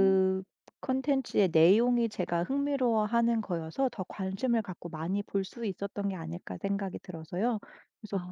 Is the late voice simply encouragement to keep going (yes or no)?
yes